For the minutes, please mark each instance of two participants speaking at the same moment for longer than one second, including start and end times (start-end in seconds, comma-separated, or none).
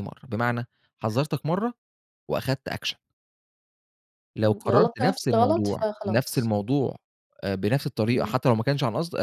4.4-6.5